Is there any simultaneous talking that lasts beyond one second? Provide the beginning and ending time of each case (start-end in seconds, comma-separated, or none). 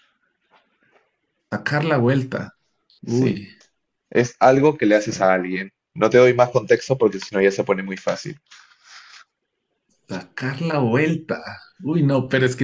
none